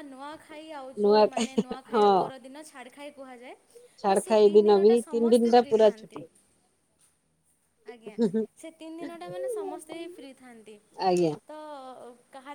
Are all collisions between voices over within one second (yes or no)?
no